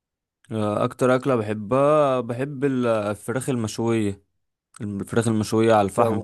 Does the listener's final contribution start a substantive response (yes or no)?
no